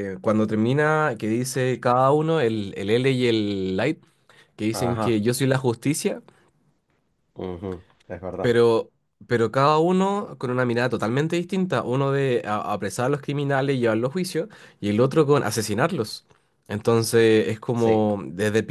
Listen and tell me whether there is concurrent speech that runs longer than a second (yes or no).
no